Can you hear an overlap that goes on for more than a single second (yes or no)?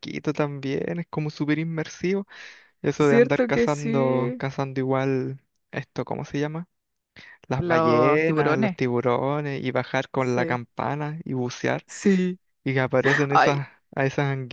yes